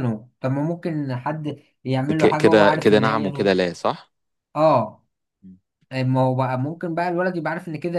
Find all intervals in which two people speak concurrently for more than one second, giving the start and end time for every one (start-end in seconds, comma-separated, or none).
2.1-3.6